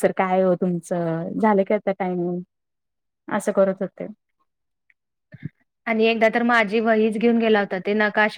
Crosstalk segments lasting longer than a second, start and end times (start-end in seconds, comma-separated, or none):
none